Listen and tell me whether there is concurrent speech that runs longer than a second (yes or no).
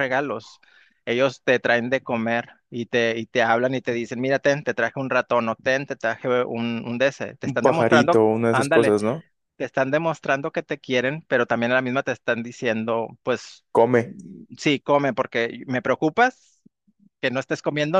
yes